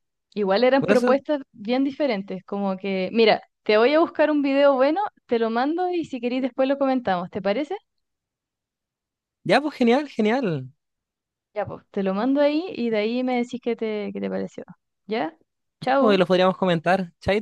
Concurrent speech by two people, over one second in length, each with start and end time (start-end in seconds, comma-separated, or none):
none